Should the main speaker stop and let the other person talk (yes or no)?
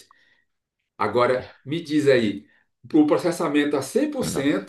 no